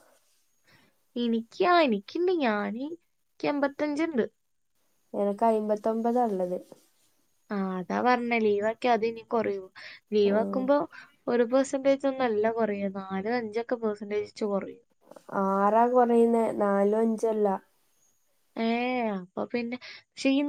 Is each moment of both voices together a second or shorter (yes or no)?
yes